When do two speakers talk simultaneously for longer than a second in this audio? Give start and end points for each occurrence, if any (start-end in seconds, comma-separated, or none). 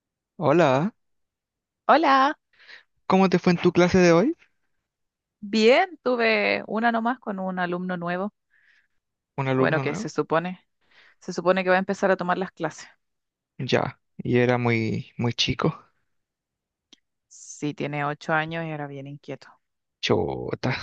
none